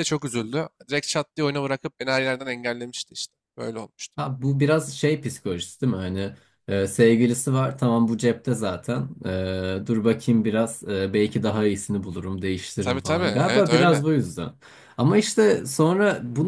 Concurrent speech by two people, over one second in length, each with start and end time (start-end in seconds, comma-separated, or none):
12.8-14.0